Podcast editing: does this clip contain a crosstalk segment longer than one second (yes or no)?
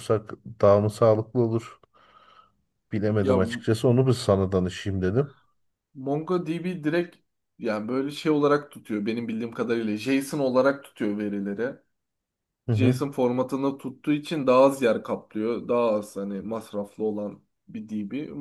no